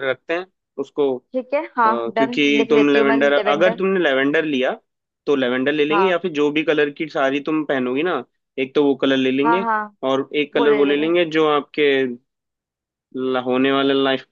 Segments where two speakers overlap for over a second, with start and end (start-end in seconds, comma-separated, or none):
2.2-3.8